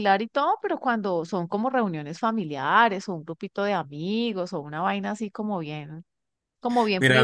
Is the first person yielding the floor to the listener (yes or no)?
yes